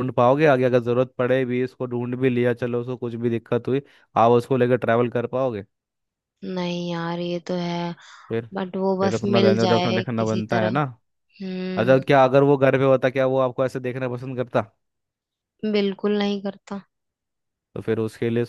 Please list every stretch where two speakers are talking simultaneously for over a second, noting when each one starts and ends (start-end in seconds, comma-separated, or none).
9.0-10.8